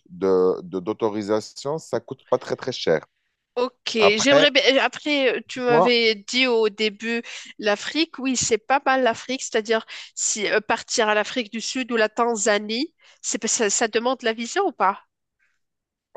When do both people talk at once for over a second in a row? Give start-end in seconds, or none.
none